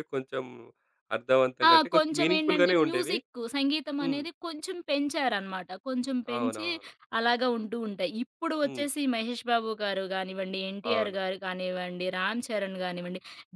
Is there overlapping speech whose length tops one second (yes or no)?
yes